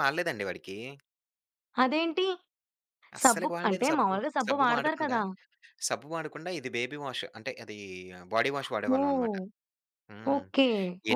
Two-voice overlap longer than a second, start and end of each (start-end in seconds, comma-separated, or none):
3.2-5.2